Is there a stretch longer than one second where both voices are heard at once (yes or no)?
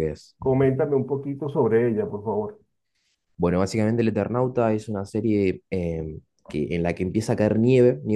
no